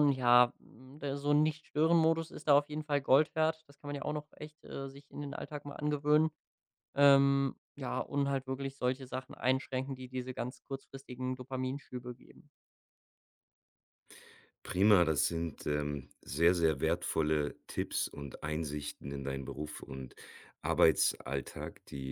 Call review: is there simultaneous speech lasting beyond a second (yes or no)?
no